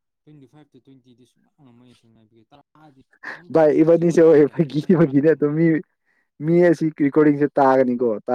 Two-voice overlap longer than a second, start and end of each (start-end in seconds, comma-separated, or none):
3.5-5.5